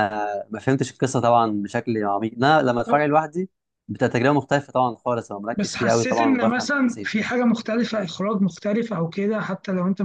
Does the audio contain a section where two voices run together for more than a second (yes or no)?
yes